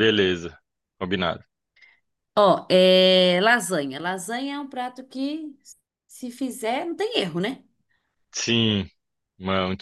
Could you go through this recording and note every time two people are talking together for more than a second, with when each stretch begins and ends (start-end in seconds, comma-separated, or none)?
none